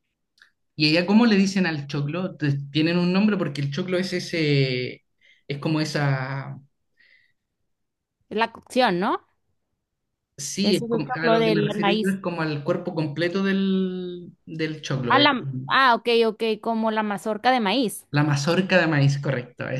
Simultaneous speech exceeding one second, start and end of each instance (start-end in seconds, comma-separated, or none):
10.6-12.2